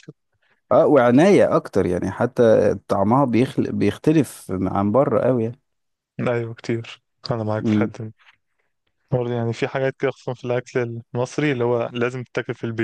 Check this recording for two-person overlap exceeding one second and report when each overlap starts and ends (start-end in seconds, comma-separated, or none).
none